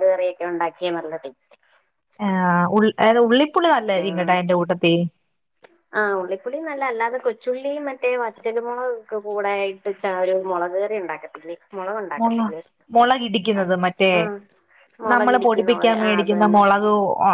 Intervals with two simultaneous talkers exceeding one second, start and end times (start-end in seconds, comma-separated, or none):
15.1-16.6